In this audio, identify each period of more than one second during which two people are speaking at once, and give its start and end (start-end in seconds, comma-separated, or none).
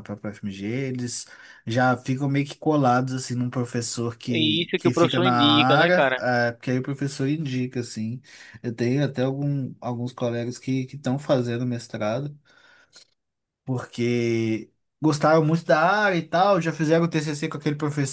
4.4-6.3